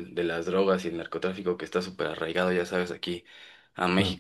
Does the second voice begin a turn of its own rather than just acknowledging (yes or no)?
no